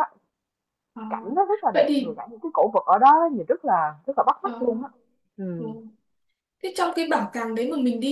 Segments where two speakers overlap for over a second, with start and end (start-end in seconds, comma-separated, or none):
none